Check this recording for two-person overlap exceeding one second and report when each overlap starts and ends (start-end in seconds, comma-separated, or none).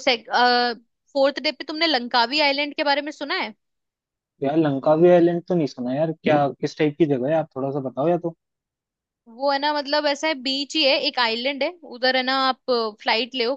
none